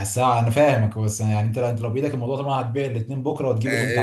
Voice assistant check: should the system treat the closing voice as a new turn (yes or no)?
yes